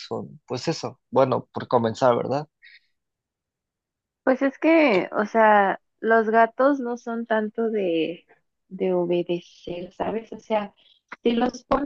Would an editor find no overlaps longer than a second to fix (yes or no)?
yes